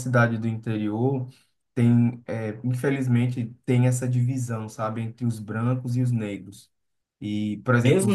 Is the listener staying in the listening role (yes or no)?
no